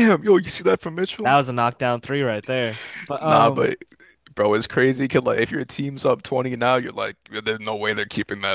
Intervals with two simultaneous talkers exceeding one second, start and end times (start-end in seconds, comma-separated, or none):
none